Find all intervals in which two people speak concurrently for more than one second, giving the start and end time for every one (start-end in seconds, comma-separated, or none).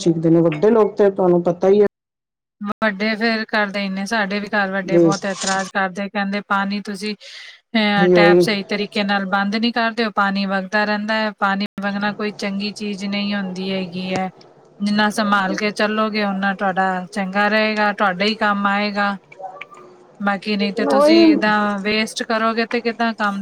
none